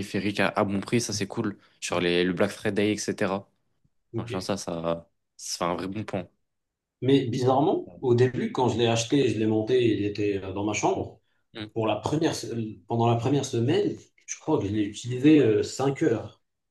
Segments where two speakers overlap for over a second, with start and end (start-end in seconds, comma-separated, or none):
none